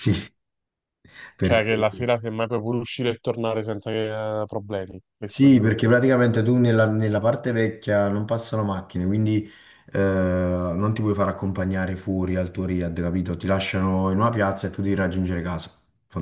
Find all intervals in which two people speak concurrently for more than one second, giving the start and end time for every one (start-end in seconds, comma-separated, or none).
none